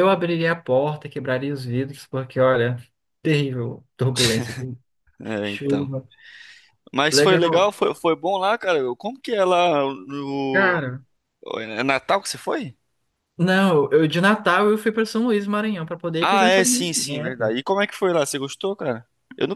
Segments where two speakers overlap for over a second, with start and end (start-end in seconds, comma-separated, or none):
16.2-17.5